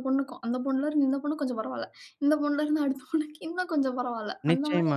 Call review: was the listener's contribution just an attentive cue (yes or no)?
no